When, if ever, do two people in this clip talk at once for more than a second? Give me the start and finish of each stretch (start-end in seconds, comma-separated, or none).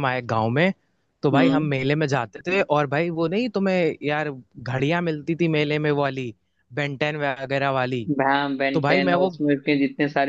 none